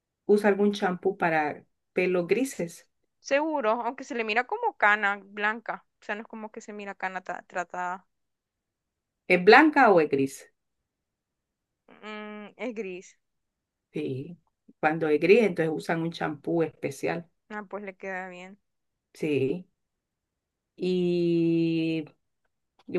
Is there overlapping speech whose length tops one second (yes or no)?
no